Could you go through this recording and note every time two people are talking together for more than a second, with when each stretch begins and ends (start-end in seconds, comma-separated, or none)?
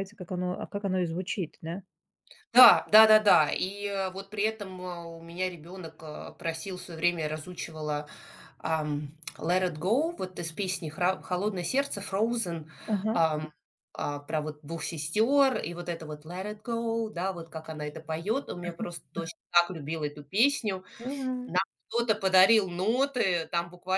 none